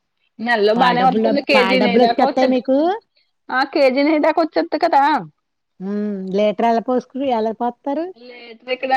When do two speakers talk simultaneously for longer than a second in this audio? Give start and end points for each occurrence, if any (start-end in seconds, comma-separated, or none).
0.8-2.6